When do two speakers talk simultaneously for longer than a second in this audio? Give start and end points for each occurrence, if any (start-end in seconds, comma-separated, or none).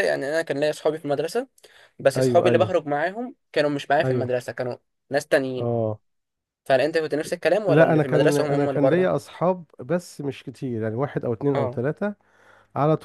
7.7-9.1